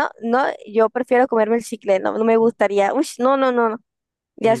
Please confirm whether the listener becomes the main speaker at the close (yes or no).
yes